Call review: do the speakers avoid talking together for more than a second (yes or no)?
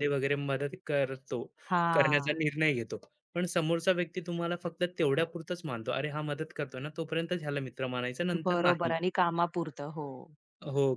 yes